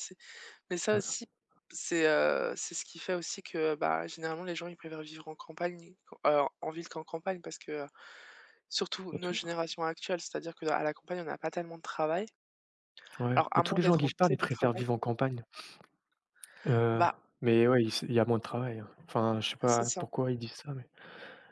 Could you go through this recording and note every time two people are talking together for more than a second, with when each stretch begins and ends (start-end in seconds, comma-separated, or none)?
13.3-14.8